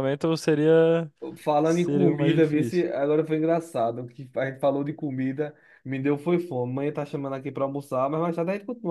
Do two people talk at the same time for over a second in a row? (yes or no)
yes